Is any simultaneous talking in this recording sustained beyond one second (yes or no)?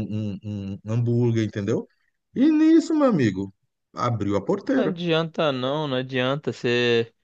no